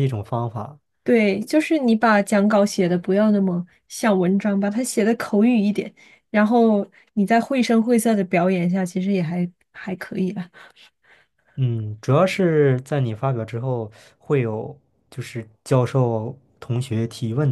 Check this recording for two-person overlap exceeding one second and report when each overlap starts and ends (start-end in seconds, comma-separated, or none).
none